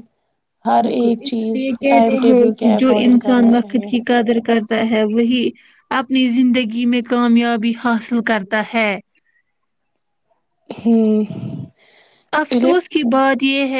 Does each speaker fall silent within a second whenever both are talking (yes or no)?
no